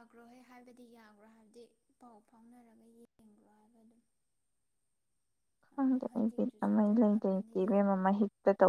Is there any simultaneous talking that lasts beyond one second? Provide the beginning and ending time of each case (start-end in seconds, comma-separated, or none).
5.7-8.0